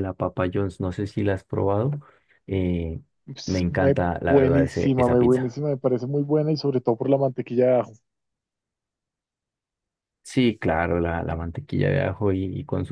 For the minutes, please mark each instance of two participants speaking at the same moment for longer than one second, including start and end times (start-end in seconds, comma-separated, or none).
3.5-5.5